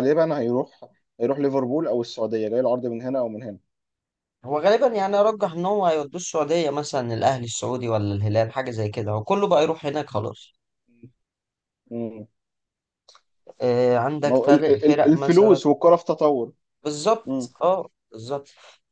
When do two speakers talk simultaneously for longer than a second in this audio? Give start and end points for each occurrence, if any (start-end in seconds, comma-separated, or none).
14.2-15.6